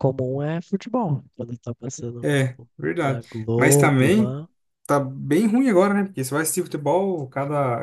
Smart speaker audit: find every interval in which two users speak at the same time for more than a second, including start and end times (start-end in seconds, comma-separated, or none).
2.2-4.4